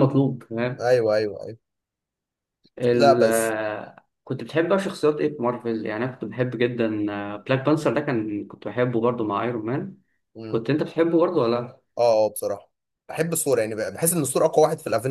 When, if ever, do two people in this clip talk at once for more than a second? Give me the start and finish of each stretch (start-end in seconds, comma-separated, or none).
none